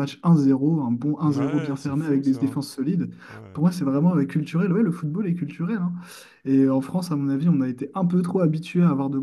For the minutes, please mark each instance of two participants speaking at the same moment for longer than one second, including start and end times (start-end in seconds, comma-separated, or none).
1.2-2.6